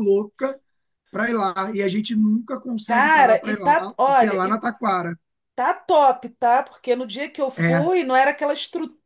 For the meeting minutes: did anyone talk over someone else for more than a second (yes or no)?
yes